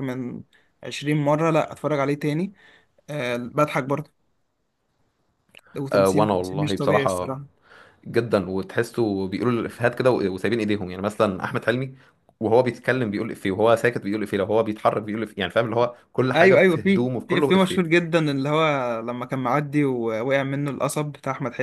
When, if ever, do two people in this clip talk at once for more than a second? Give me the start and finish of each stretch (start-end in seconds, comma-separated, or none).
5.9-7.3, 16.3-18.0